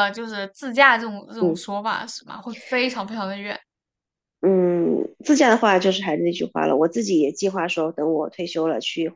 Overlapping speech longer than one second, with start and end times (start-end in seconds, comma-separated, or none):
none